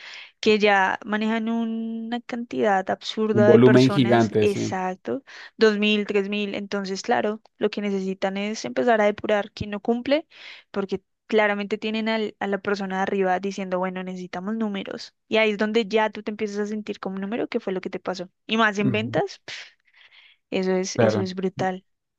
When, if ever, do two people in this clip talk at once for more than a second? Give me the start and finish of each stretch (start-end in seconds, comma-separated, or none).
3.3-4.8